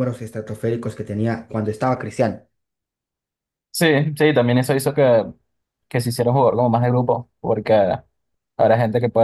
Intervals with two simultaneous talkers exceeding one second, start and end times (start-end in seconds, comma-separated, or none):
none